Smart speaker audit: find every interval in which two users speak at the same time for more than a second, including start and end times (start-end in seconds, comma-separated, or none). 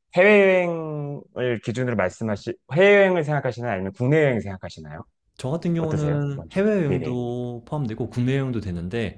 5.8-7.2